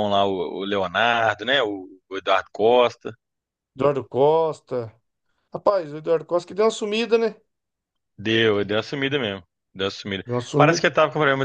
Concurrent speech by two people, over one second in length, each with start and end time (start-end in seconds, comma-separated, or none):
none